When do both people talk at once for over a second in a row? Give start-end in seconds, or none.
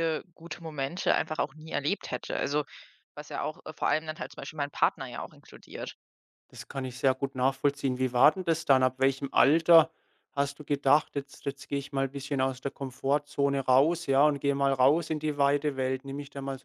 none